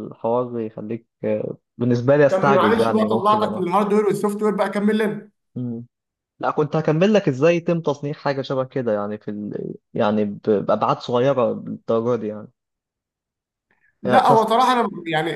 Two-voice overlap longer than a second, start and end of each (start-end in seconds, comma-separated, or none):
2.3-3.6